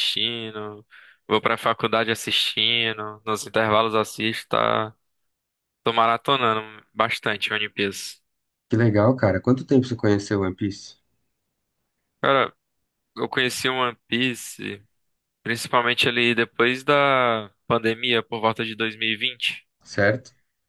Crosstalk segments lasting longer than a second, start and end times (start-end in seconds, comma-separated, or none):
none